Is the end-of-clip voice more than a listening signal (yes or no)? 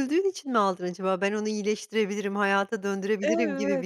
yes